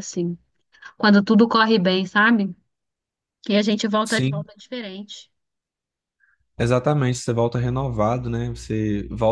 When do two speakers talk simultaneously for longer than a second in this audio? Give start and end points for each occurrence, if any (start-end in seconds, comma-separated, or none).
none